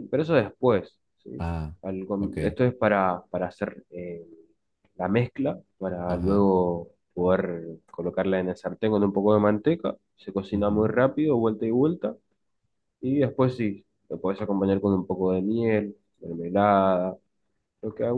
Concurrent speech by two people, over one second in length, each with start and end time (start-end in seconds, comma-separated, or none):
none